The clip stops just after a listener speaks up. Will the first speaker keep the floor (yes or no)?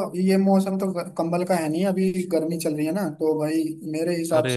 yes